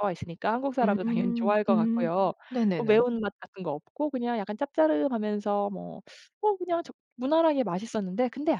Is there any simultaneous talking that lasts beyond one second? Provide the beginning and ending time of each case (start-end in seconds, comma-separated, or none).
0.8-2.1